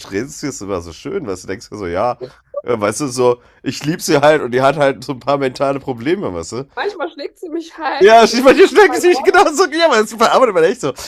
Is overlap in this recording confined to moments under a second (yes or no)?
no